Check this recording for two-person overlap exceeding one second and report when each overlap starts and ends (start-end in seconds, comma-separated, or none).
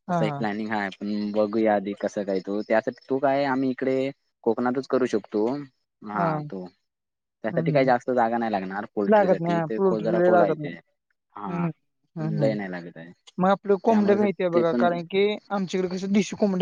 9.1-10.7